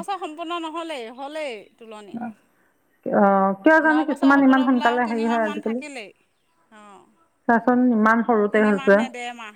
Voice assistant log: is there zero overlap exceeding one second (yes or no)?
no